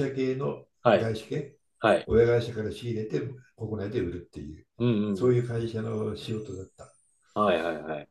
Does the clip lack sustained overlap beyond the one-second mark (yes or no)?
yes